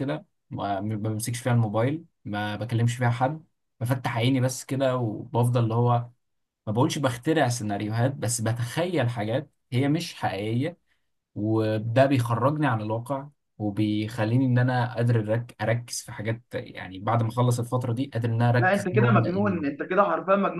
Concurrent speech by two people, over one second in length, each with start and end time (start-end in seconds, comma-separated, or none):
18.6-19.8